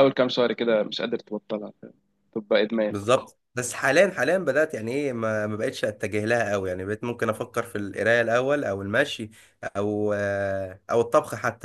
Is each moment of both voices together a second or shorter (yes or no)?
yes